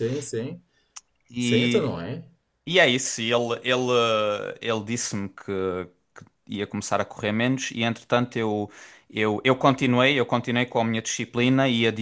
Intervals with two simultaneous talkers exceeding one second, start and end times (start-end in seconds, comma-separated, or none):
none